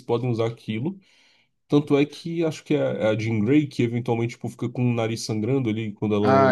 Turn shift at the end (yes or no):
yes